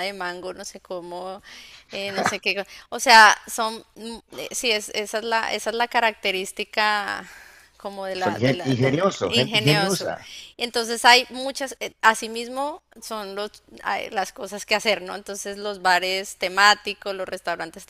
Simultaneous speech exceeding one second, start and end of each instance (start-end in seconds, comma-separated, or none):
8.2-10.1